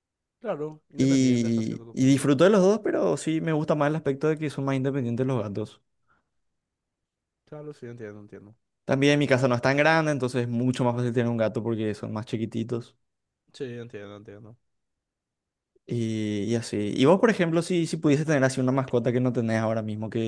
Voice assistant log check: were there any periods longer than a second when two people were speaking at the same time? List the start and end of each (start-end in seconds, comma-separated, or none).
1.0-2.3